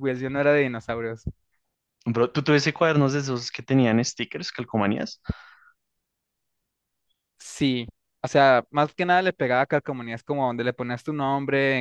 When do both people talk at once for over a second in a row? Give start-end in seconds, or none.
none